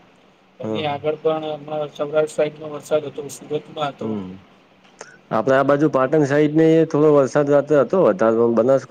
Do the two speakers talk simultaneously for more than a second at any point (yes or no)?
no